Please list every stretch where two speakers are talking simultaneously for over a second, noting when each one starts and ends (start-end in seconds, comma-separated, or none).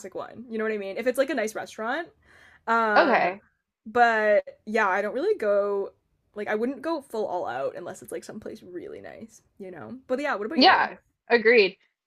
none